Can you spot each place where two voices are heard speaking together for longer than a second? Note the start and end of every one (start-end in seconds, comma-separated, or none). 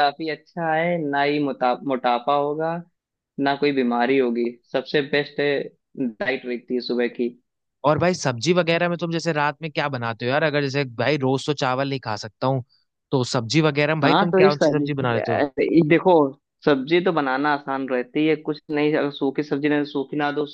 14.0-15.4